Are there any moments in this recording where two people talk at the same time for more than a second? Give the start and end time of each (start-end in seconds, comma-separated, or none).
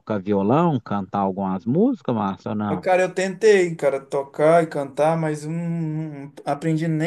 none